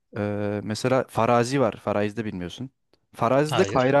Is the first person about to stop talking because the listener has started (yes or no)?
no